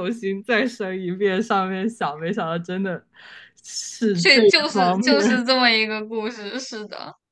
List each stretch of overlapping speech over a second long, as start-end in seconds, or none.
4.2-5.5